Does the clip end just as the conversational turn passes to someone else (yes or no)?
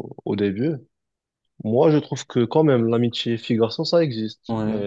no